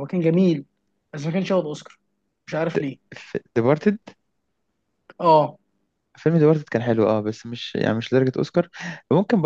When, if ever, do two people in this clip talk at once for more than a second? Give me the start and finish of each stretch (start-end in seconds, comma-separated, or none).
none